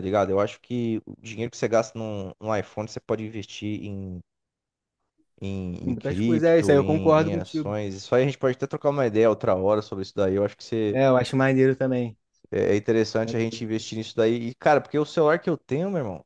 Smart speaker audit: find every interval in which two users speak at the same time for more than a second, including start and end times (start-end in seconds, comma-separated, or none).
5.8-7.7